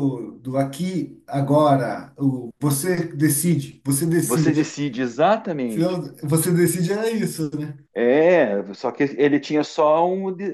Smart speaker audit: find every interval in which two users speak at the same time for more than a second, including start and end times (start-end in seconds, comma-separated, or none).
none